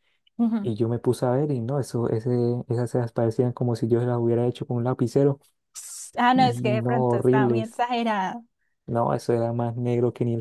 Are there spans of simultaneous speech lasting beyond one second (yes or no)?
yes